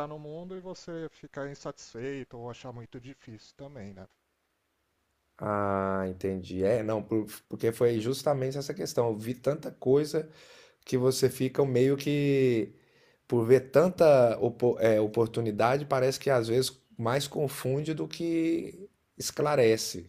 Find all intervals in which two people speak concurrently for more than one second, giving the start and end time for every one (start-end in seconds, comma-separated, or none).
none